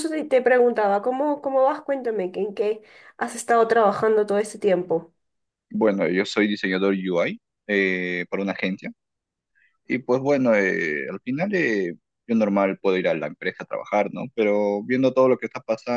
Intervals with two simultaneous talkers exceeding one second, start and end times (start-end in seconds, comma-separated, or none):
none